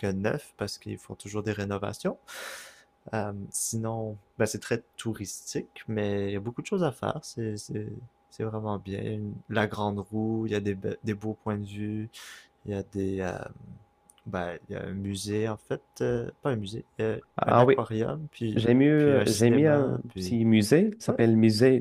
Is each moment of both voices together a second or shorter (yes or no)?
no